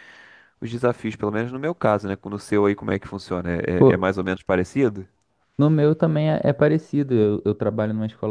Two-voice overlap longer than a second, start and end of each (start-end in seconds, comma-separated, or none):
none